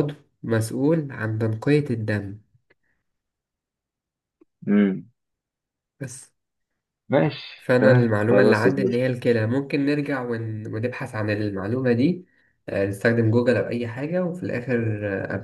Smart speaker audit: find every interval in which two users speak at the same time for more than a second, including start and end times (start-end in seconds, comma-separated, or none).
7.6-9.0